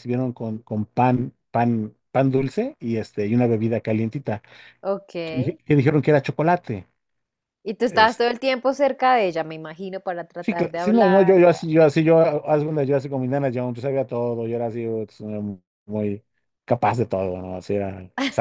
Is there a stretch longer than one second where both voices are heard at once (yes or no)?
yes